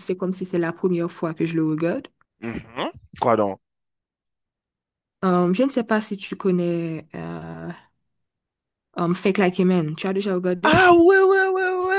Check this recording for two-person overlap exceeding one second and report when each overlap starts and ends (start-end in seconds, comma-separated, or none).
none